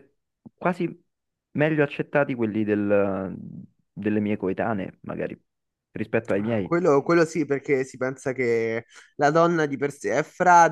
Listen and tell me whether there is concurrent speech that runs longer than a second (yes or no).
no